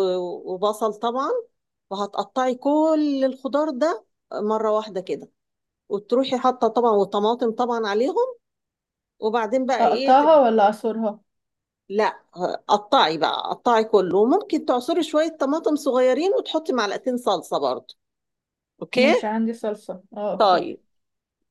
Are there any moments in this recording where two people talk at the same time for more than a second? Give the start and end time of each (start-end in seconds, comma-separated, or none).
none